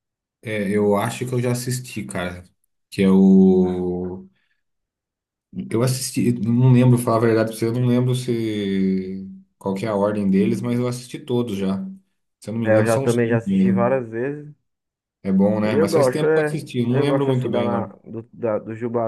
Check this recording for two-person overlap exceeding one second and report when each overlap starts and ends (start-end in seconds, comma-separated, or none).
12.6-14.0, 15.6-17.9